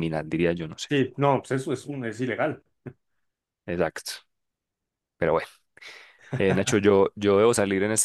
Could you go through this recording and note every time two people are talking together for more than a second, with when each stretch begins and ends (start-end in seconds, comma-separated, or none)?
none